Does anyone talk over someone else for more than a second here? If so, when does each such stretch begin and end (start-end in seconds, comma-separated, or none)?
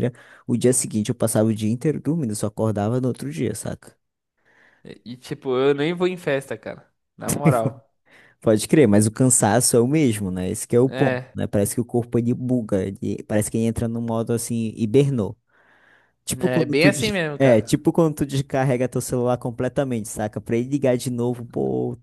16.4-17.7